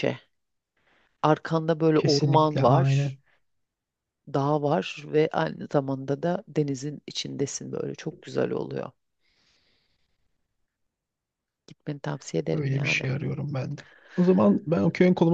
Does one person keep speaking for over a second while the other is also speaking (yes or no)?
yes